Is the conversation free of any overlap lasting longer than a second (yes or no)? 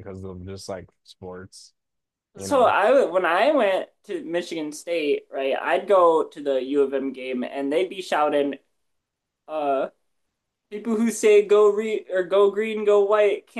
yes